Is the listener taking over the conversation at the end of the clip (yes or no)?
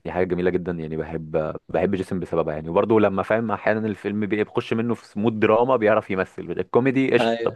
no